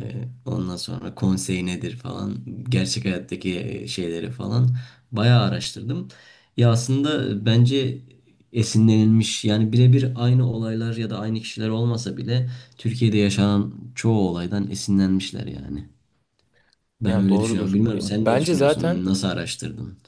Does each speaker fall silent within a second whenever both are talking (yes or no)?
no